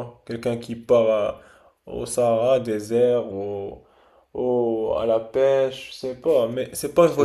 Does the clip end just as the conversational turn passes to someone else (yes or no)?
no